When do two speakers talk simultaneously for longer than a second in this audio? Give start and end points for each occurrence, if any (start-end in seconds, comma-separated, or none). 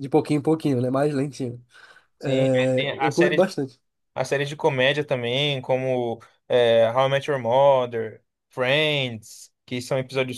2.2-3.5